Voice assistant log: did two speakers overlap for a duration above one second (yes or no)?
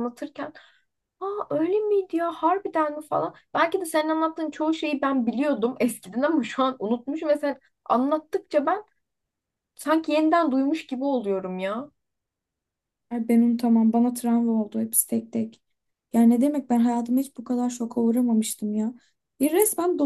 no